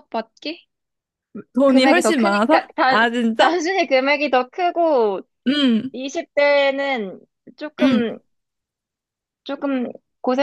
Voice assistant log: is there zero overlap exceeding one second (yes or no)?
no